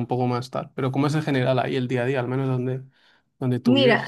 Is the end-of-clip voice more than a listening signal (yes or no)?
yes